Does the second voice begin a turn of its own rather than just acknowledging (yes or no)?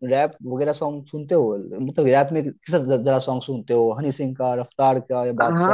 yes